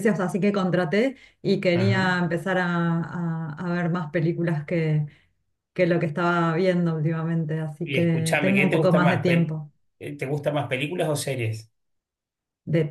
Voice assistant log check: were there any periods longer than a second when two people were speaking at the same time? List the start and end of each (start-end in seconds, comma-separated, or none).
7.8-9.6